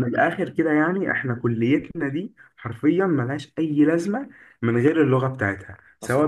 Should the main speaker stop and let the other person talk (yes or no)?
no